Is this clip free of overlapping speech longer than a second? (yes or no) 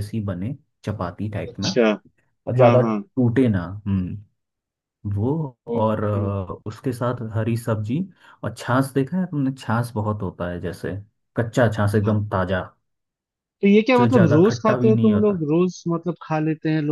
no